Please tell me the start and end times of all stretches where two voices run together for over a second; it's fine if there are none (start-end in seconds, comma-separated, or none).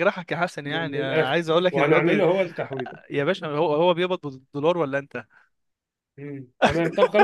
0.6-2.2